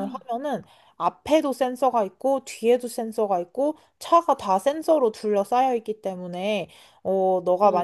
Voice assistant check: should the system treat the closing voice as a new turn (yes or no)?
no